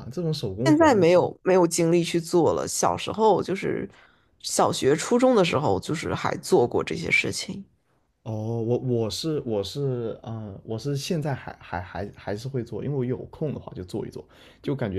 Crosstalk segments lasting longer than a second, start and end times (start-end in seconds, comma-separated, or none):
none